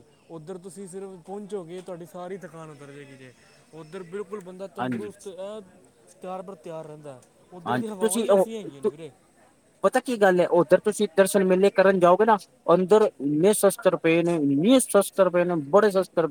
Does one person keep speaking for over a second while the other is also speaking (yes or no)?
yes